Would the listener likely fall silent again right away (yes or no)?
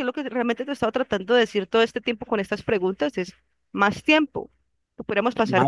no